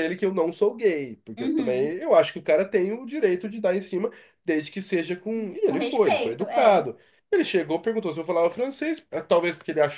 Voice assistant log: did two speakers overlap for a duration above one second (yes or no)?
yes